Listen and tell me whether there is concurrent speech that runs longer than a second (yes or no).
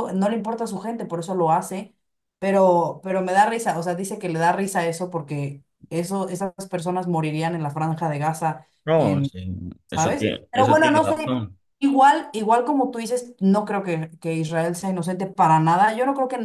yes